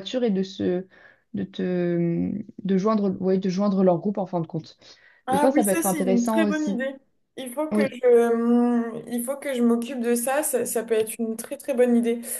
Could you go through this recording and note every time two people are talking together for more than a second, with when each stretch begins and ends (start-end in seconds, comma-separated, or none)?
5.3-6.8